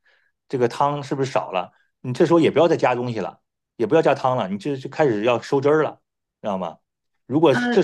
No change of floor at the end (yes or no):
yes